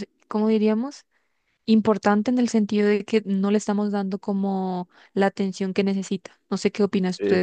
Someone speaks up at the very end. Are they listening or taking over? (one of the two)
taking over